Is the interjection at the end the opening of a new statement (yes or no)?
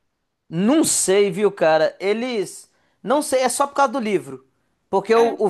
no